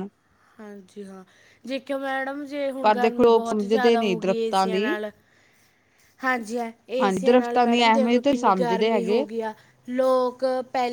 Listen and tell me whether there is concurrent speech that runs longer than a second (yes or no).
yes